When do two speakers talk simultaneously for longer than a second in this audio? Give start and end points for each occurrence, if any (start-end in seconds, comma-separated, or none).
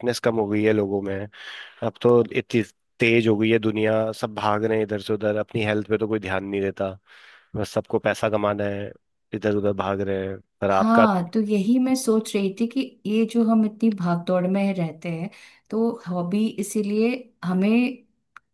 none